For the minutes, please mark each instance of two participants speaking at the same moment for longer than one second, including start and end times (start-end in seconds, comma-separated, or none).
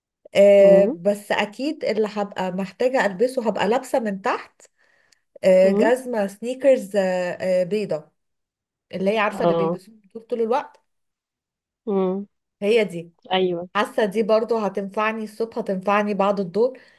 none